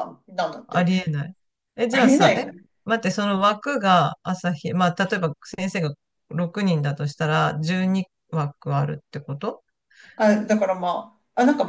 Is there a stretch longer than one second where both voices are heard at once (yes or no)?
no